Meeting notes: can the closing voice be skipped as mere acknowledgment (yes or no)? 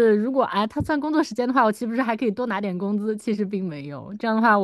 yes